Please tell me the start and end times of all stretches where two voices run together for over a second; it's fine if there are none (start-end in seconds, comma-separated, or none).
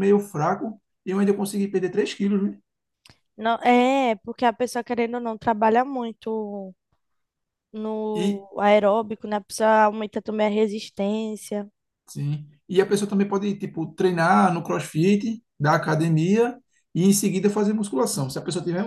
none